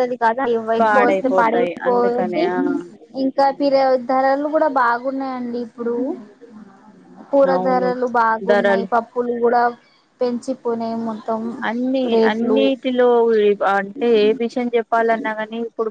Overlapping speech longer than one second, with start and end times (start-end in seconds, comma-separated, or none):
0.8-2.4